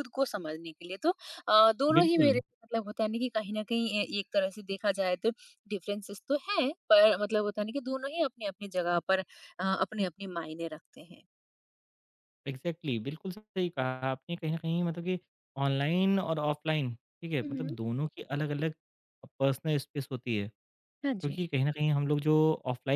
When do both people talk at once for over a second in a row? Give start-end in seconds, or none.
none